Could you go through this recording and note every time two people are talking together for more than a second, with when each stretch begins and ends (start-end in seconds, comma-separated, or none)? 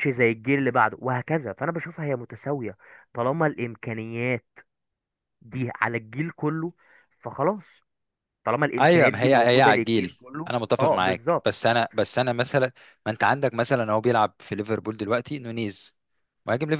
8.8-11.5